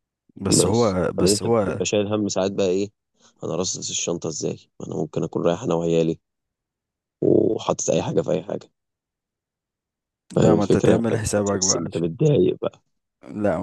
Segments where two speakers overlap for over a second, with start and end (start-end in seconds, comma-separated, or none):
0.5-1.8, 10.4-12.1